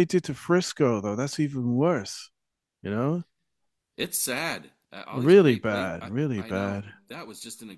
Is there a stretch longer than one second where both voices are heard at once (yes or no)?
yes